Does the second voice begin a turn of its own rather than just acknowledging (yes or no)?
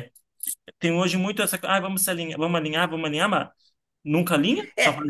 yes